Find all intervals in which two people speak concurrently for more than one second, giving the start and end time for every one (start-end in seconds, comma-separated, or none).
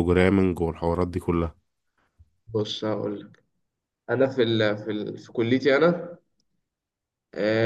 none